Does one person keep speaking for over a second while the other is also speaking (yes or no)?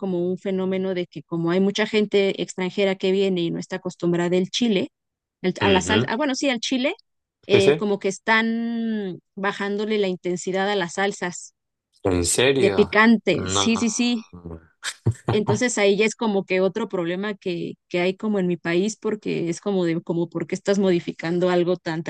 yes